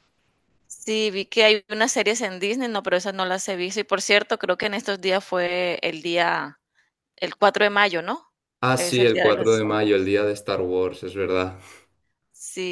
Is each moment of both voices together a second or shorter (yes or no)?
no